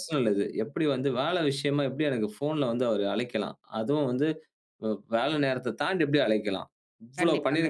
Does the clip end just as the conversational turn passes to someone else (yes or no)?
no